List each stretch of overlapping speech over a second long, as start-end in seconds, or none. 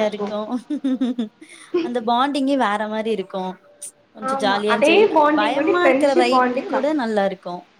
4.3-6.9